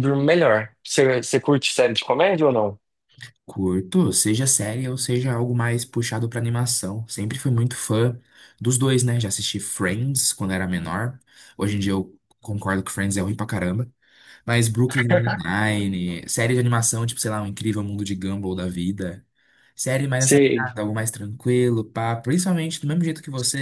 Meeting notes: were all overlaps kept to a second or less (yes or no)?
yes